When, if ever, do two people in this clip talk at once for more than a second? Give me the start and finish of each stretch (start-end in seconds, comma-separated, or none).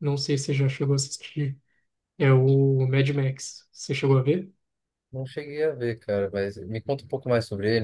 none